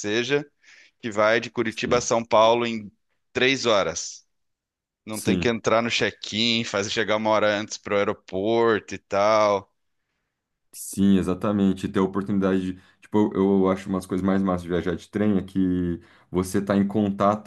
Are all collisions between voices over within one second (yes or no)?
yes